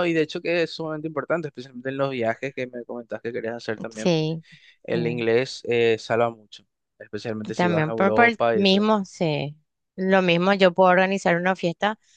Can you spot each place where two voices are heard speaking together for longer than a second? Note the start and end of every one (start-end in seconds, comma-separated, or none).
7.5-8.9